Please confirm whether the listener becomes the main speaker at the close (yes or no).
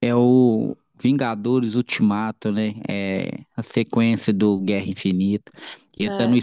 no